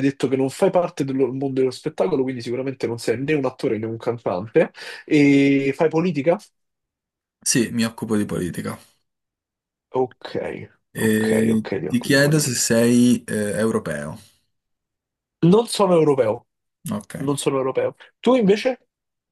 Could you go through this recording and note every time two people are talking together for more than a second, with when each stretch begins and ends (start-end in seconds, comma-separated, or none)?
10.9-12.7